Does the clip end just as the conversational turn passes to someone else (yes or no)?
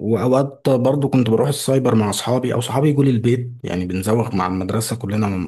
no